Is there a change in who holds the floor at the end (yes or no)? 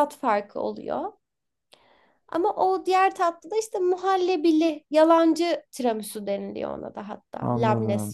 yes